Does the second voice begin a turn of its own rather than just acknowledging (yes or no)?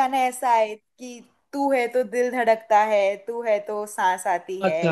yes